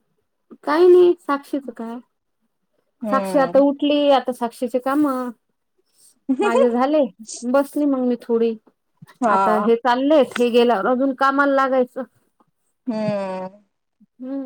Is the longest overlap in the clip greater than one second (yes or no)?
no